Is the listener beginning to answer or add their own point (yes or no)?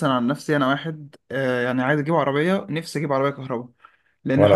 no